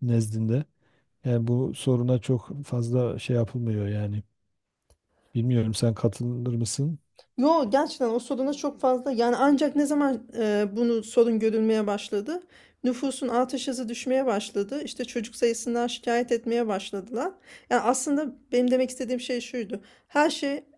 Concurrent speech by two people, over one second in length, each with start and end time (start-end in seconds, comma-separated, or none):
none